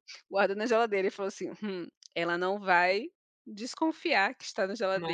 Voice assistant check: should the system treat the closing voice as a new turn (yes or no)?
no